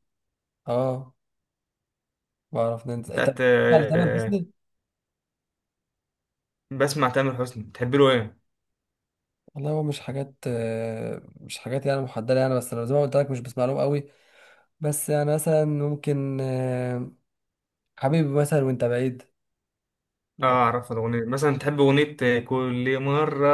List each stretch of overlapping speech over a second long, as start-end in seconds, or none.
3.1-4.4